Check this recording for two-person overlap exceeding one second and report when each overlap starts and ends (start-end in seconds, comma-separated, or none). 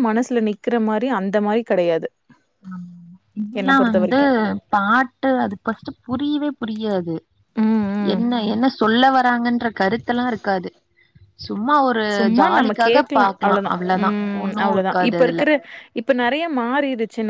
12.4-15.4